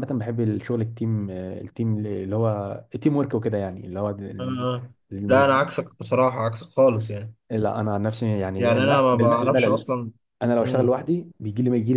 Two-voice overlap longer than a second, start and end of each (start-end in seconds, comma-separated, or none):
8.6-9.8